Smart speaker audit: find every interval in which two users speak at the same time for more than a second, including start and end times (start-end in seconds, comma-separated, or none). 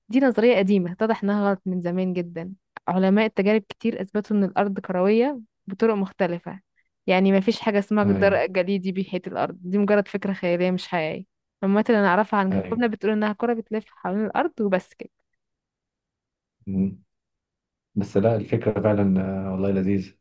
none